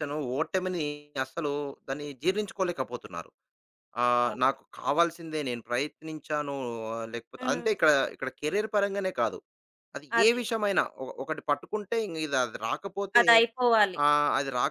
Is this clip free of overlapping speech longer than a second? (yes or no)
yes